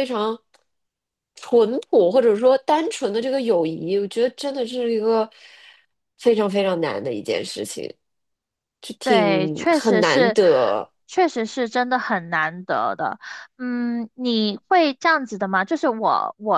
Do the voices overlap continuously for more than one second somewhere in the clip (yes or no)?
yes